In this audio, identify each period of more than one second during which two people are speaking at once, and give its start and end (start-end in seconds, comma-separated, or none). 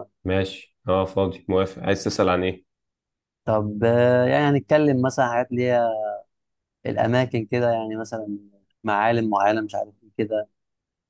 none